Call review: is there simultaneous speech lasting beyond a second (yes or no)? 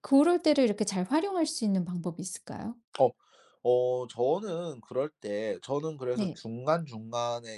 no